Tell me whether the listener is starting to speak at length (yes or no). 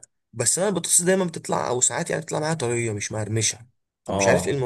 yes